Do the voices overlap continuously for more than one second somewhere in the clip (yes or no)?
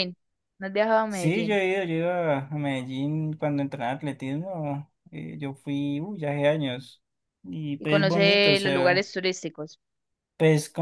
yes